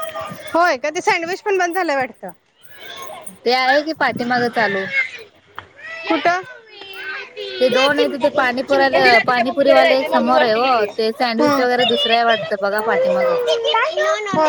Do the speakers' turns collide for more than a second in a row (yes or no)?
yes